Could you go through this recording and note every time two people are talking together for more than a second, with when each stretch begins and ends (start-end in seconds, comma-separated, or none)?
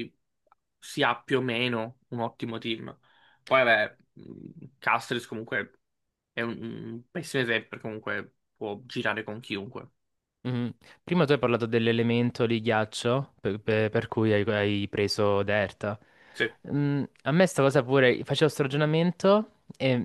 none